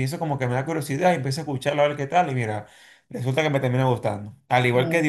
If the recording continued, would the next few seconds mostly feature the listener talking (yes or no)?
no